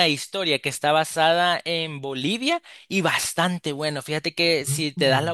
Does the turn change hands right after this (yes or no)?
no